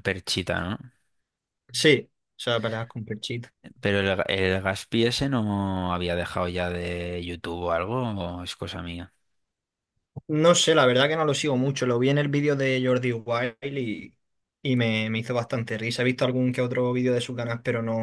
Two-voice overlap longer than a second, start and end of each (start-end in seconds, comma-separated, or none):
none